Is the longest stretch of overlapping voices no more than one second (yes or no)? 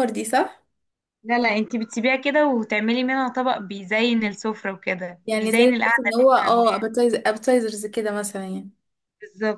no